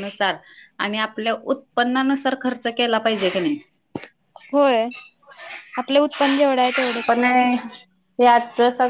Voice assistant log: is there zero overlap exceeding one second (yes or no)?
yes